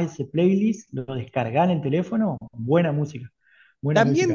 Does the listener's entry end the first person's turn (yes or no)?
yes